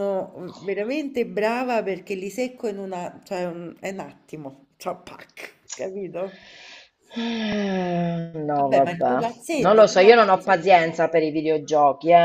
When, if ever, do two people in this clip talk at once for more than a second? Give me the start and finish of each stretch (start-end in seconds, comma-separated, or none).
8.6-10.5